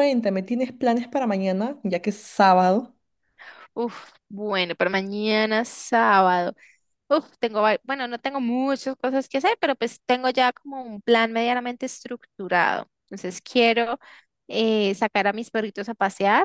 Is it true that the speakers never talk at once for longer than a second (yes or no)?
yes